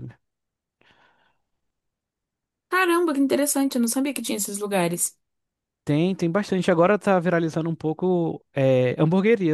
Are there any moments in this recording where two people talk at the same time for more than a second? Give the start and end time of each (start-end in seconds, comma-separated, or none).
none